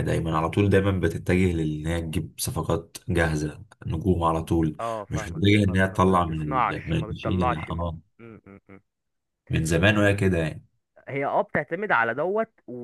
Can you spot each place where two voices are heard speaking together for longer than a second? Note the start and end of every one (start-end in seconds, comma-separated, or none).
4.8-7.8